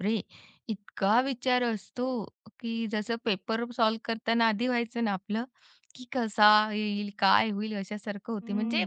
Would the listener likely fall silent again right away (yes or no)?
yes